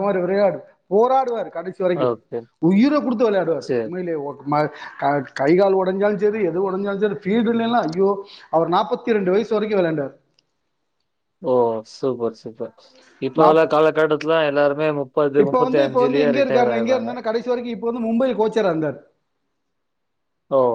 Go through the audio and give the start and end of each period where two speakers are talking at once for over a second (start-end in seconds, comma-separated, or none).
15.4-17.1